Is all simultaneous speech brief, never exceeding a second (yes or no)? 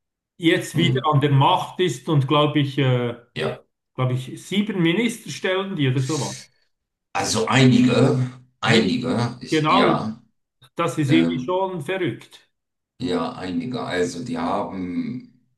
no